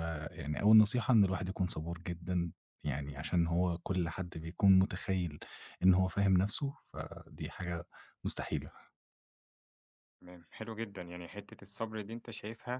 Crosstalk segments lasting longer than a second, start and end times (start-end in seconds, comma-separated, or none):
none